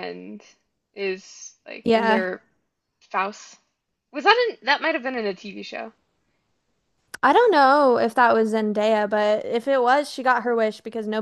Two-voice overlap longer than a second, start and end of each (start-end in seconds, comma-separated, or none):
none